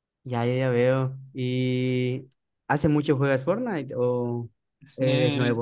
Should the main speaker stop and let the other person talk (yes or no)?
yes